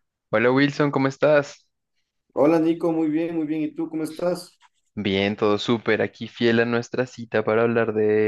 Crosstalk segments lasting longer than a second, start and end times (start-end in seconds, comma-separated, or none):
none